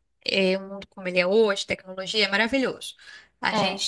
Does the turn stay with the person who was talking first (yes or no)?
yes